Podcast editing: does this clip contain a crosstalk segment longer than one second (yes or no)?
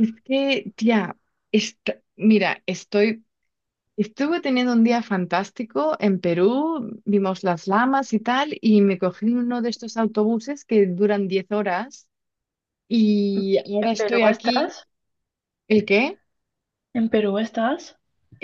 yes